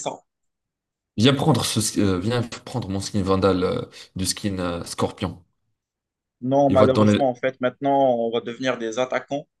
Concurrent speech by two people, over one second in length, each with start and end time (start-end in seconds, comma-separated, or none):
none